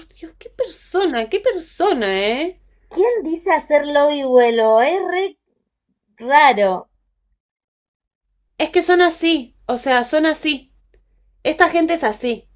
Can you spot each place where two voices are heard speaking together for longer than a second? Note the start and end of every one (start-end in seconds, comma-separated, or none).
none